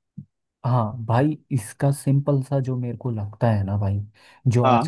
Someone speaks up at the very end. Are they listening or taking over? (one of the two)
listening